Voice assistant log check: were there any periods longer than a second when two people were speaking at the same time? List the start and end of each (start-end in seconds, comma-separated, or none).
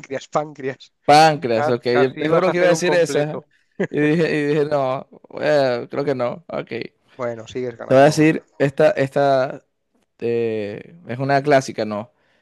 1.5-3.5